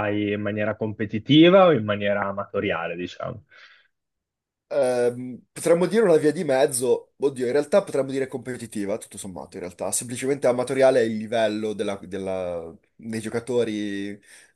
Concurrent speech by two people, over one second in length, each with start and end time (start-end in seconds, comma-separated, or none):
none